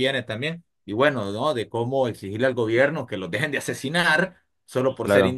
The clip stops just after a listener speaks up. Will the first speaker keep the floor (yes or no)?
yes